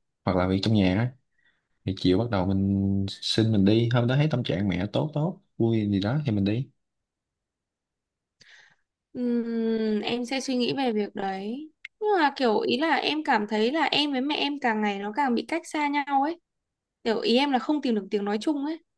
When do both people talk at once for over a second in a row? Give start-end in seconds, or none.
none